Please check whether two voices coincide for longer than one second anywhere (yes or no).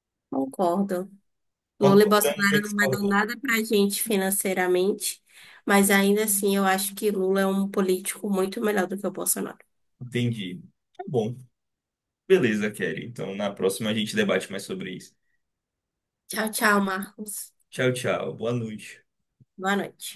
yes